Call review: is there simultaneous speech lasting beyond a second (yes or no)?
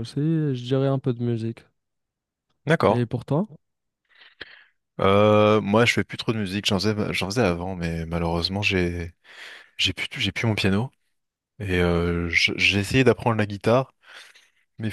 no